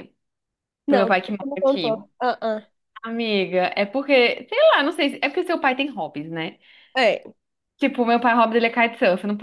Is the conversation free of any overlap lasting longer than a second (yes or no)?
no